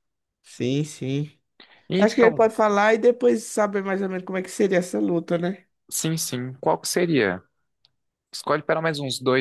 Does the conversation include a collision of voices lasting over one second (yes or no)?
no